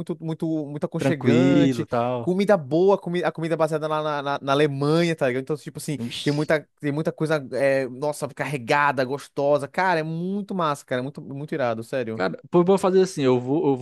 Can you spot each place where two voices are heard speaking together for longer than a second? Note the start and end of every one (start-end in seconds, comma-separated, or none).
1.0-2.3